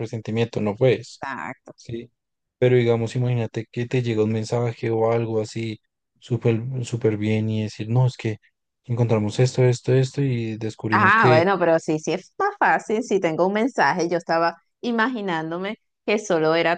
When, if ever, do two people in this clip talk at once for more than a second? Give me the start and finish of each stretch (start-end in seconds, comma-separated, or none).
none